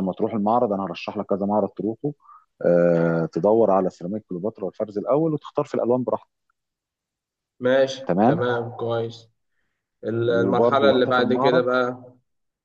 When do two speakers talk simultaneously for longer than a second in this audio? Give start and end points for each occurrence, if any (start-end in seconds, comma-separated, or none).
10.3-11.6